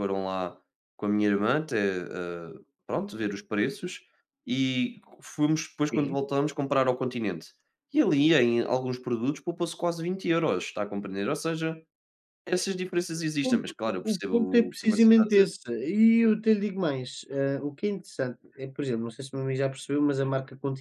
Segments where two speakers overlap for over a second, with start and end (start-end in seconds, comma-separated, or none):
13.5-15.5